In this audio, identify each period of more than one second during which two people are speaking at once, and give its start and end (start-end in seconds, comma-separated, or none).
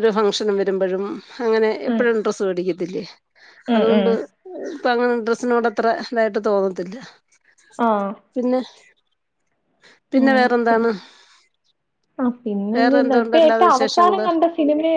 12.8-14.2